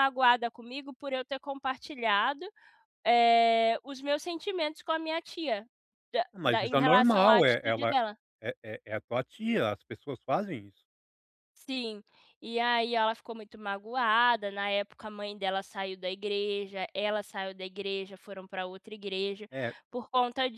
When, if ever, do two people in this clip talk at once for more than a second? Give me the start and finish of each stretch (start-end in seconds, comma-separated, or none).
6.3-7.9